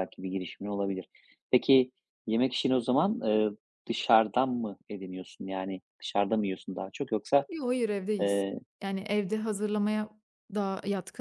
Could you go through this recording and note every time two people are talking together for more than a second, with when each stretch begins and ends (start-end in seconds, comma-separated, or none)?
none